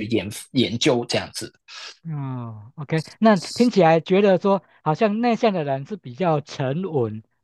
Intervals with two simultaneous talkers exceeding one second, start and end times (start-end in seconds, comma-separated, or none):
none